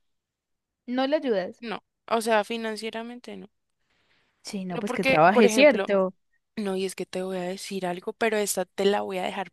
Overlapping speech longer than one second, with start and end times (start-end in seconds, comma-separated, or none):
4.7-5.9